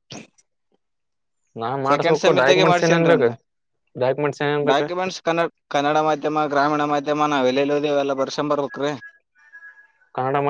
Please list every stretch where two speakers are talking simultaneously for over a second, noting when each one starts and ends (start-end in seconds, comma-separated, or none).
1.9-3.3